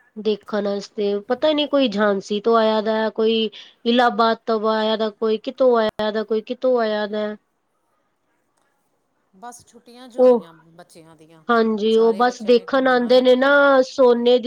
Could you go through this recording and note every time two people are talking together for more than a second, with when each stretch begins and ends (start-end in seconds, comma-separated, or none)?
11.9-13.3